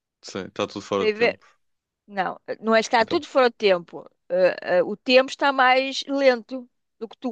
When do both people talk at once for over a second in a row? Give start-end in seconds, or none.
none